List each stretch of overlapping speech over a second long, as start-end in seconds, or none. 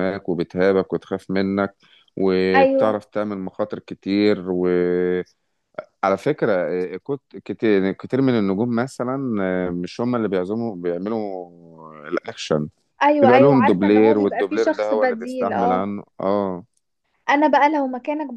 13.2-15.9